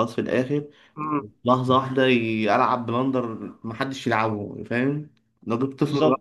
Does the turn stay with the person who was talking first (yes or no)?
no